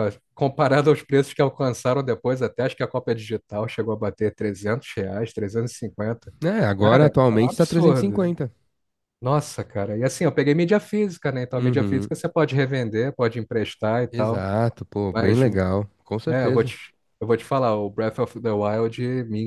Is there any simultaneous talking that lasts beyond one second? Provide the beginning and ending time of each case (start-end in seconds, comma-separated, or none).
6.8-8.3